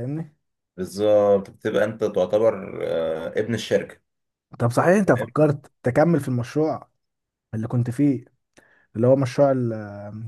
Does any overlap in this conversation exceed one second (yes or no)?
no